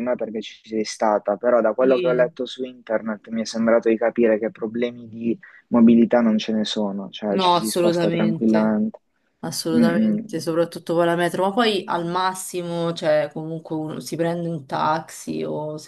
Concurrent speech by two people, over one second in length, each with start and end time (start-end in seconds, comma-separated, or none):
7.3-8.8